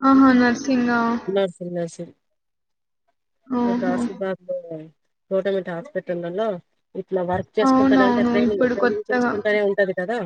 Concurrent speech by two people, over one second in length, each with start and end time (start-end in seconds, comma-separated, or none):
7.7-9.3